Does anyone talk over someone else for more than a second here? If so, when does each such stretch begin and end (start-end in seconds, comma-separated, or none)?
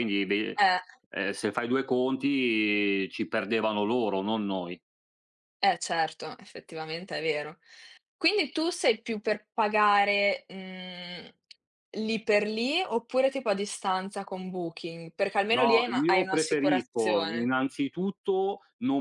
15.5-17.5